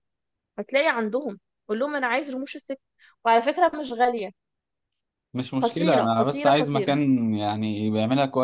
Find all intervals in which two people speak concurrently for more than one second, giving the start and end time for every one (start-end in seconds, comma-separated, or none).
5.6-7.0